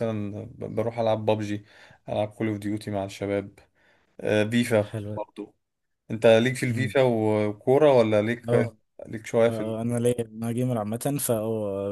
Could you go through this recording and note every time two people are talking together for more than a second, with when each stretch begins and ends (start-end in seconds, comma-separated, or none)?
none